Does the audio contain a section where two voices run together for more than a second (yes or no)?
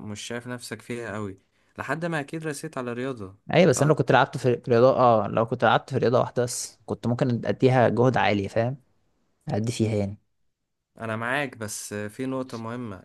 no